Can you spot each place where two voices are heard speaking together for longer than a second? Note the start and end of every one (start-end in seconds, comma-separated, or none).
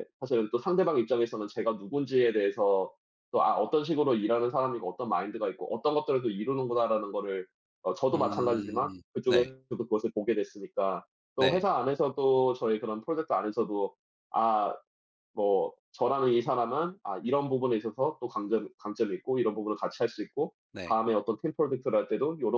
8.1-9.5